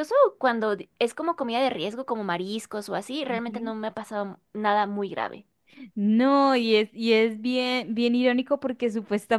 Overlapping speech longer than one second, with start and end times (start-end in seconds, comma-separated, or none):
none